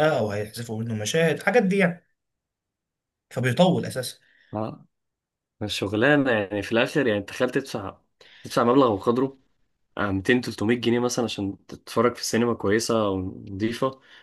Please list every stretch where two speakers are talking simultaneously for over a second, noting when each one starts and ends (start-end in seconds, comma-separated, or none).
none